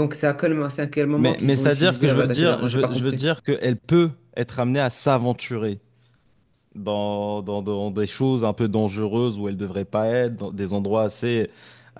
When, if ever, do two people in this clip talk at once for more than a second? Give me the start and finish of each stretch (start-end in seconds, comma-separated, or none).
1.2-3.2